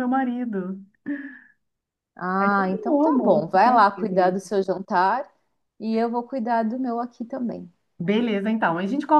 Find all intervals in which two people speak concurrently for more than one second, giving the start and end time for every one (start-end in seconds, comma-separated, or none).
2.4-4.4